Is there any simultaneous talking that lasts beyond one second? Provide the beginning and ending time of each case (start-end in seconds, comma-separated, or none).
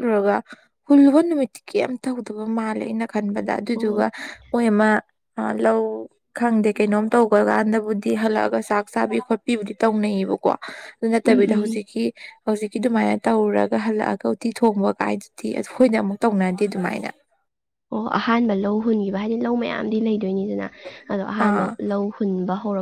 none